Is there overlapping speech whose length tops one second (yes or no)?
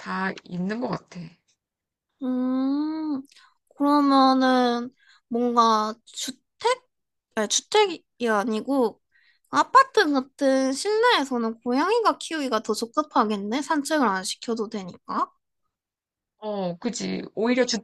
no